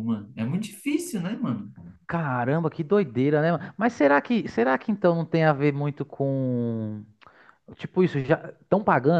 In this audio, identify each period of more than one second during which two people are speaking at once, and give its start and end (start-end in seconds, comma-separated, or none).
none